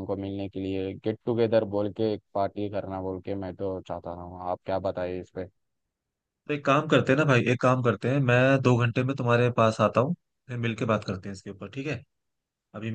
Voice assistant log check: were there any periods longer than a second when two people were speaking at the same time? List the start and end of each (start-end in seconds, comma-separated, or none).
none